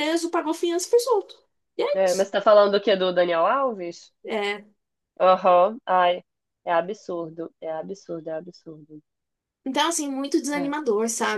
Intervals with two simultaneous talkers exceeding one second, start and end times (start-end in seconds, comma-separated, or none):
none